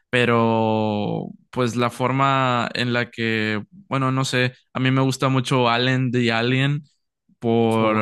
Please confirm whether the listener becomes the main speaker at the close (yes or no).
no